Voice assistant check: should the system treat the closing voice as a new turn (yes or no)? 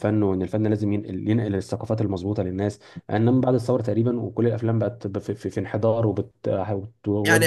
yes